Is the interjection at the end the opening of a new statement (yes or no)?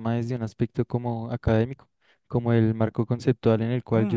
yes